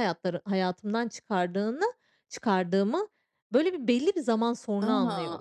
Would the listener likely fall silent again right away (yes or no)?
no